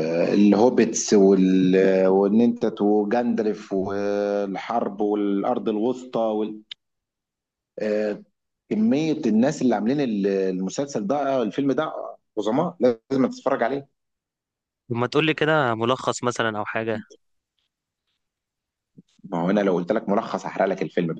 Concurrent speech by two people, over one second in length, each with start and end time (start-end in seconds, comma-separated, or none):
none